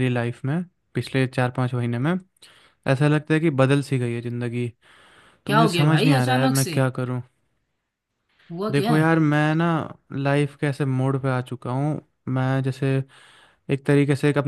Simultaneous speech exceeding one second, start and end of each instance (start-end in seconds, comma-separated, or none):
5.5-6.8